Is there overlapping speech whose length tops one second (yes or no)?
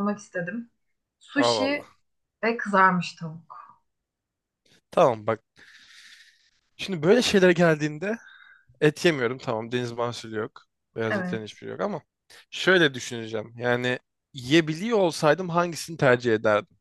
no